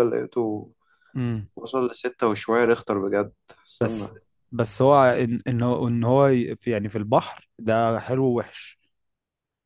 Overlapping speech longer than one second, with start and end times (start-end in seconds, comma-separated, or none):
none